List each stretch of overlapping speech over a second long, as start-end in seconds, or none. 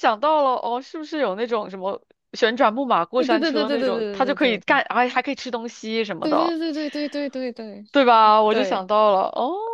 3.2-4.8